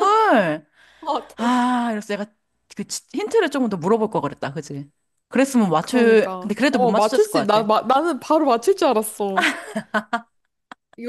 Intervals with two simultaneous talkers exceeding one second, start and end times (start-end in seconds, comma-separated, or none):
5.8-7.7